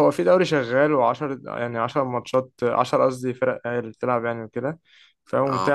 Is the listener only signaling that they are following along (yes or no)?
yes